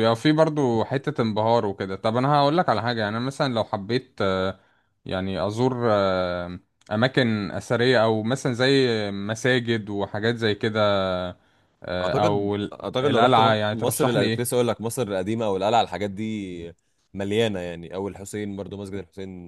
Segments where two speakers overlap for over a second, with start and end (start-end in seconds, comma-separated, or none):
12.0-14.4